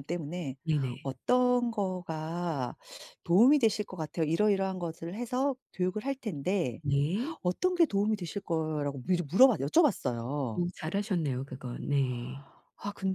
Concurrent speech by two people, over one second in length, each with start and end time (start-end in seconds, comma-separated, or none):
none